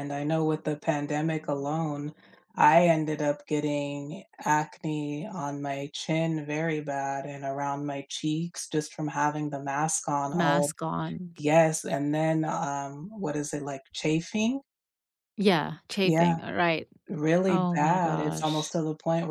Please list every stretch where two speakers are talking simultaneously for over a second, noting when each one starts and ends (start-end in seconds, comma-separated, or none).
17.5-18.7